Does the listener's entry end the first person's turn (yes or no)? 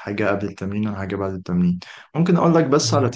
no